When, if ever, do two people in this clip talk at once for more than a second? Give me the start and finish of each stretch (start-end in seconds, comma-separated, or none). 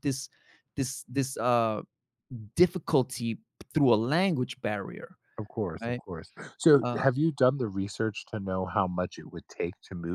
none